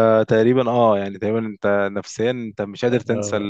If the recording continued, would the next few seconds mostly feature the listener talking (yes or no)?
yes